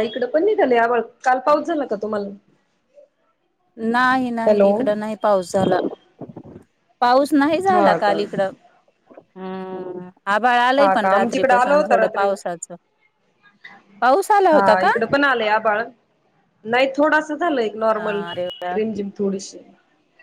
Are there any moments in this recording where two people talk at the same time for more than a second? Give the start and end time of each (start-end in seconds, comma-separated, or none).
10.8-12.3